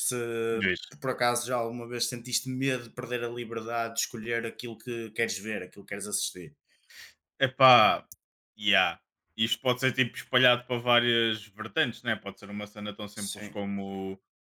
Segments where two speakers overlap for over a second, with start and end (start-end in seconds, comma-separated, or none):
none